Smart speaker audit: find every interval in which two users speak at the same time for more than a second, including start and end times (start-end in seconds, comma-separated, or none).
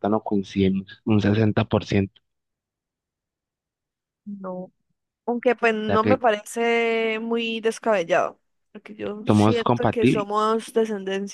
9.2-10.5